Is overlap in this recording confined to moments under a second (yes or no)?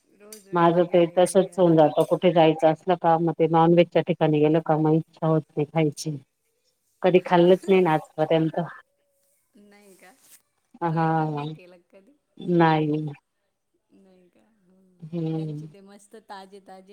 no